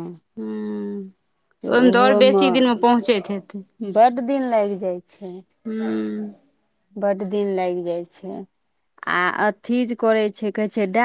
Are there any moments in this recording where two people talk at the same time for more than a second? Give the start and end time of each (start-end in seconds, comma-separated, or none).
none